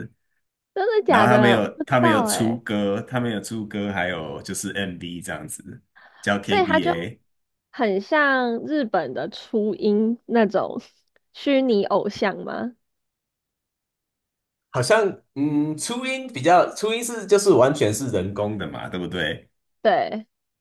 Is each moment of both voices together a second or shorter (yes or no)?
no